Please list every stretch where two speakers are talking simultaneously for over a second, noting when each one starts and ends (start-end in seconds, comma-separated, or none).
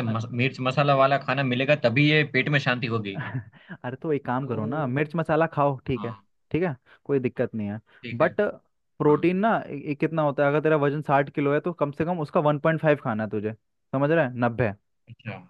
none